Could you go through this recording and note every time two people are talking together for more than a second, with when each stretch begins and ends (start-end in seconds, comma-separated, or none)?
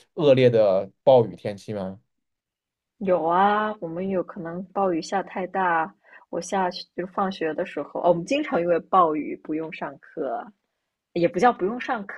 none